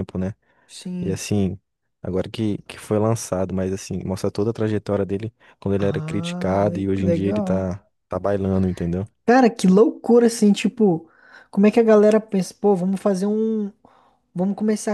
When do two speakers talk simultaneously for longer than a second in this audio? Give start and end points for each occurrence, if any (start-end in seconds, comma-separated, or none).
5.8-7.6